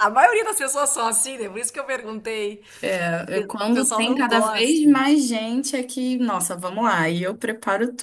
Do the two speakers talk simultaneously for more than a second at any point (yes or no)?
yes